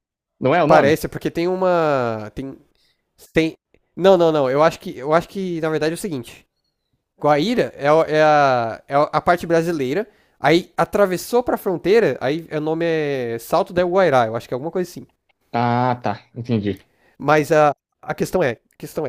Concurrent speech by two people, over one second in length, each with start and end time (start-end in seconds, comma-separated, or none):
none